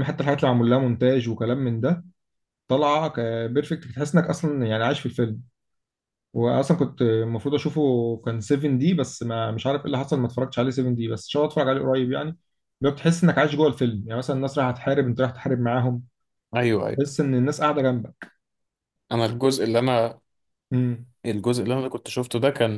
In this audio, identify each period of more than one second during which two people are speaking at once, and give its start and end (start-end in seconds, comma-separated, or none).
none